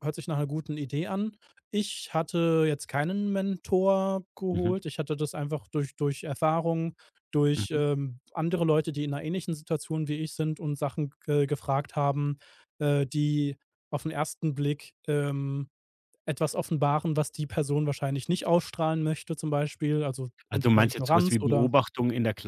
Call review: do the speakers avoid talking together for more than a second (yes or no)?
no